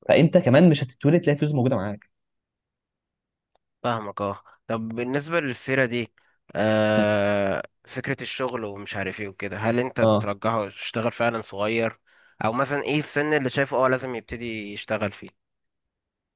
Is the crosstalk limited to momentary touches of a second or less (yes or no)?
yes